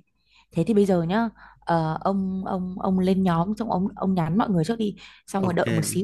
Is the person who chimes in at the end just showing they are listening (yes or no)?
yes